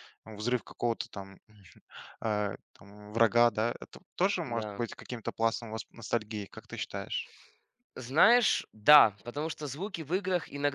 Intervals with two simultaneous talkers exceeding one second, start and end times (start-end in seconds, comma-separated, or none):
none